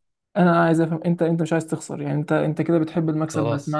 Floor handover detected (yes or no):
no